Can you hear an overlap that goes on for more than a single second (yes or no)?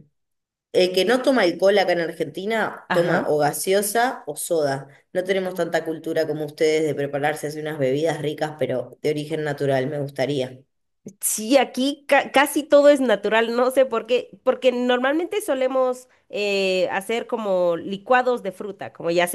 no